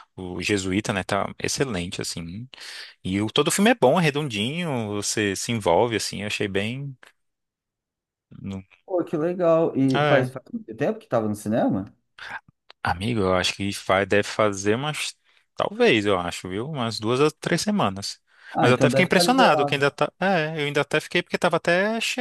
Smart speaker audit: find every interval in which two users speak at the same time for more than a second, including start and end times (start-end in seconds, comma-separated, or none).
18.6-19.8